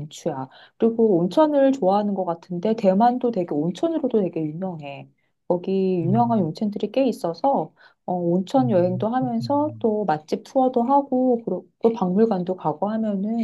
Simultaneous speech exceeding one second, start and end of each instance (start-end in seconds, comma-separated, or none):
8.6-9.9